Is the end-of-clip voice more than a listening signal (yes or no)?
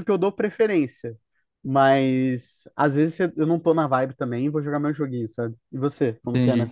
yes